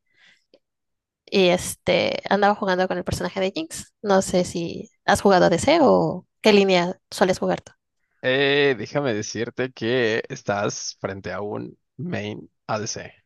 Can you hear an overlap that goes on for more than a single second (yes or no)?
no